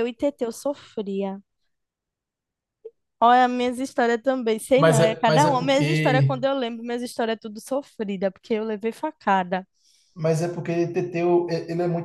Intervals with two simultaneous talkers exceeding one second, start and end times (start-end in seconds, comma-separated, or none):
4.8-6.4